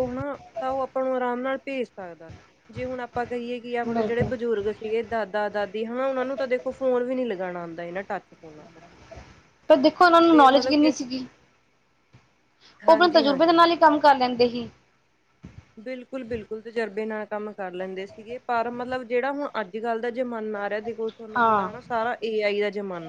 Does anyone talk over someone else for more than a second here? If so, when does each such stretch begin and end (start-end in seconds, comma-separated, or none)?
none